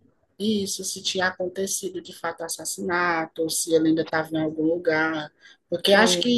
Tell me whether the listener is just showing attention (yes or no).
yes